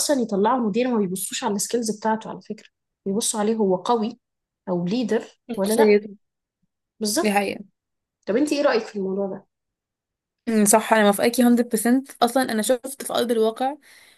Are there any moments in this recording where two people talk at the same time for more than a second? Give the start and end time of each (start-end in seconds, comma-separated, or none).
none